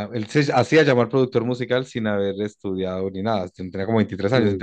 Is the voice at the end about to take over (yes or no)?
no